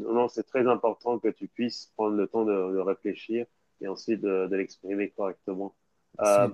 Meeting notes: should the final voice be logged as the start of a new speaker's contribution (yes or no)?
no